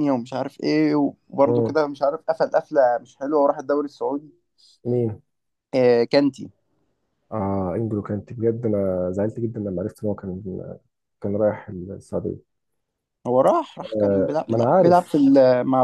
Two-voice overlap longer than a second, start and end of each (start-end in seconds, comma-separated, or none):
13.8-15.0